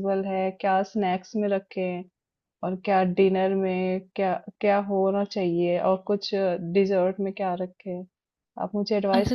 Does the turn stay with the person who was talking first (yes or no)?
no